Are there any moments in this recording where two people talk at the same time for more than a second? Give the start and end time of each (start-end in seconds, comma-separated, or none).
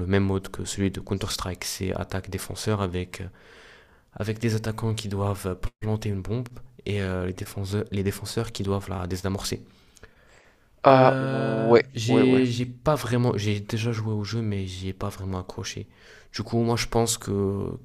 10.9-12.4